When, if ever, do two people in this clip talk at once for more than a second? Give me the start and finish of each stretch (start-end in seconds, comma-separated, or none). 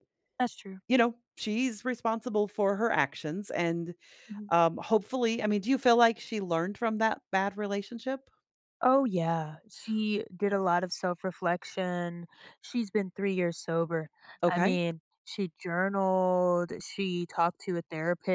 none